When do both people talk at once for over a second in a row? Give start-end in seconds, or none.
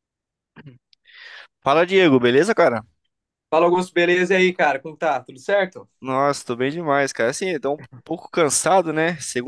none